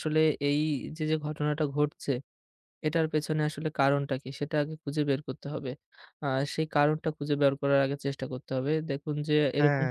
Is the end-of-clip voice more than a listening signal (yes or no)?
no